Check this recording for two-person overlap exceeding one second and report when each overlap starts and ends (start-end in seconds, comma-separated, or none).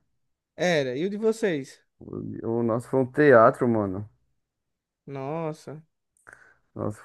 none